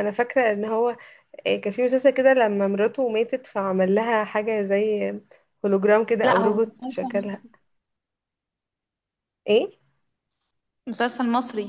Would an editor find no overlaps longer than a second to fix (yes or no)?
no